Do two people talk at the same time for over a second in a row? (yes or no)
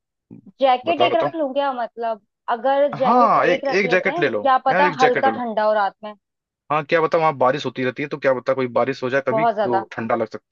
yes